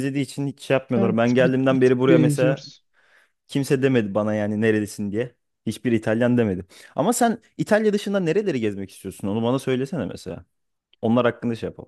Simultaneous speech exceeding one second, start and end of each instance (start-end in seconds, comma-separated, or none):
0.9-2.6